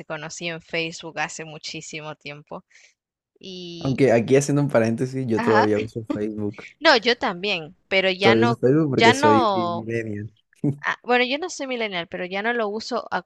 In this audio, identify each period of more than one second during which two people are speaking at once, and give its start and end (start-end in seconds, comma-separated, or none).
8.2-9.9